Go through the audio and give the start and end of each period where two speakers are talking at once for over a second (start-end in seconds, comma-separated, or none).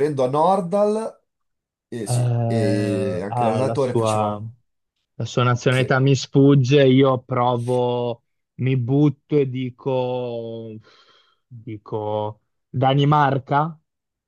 2.0-4.4